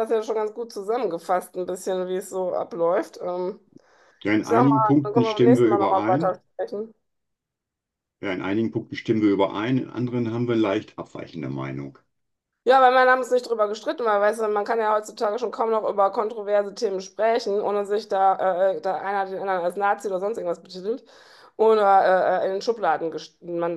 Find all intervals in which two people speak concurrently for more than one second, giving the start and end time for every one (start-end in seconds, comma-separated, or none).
4.4-6.4